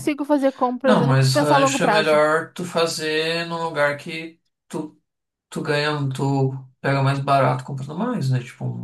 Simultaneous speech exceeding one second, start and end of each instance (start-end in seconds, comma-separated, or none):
0.8-2.2